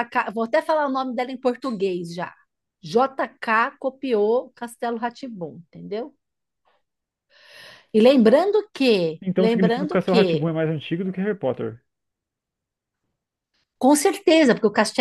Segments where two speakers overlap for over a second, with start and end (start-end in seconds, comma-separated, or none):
9.2-10.5